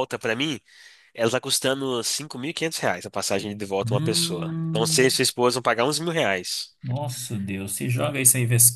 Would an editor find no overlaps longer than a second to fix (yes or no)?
no